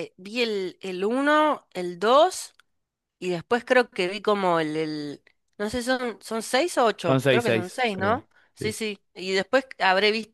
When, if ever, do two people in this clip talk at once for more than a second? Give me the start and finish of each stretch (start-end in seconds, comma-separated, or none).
7.1-8.8